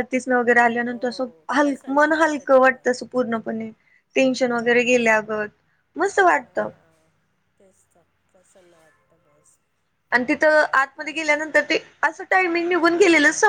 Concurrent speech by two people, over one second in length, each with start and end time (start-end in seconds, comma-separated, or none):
0.8-2.8